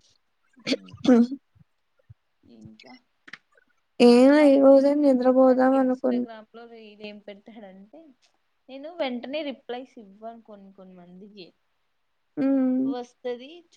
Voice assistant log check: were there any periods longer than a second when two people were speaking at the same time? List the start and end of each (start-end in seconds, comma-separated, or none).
4.4-6.2